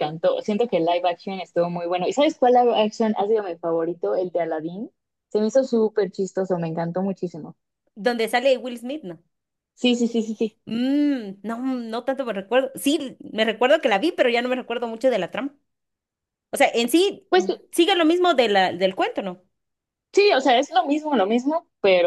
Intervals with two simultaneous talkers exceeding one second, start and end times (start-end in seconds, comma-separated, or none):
none